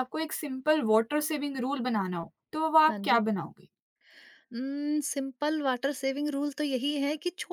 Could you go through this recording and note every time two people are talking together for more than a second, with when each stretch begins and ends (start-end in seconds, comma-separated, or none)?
none